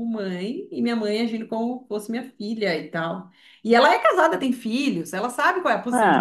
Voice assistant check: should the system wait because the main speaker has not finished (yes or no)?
no